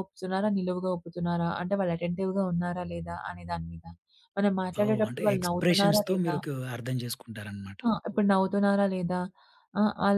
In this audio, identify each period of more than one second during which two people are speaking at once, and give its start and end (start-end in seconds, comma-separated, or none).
4.8-6.3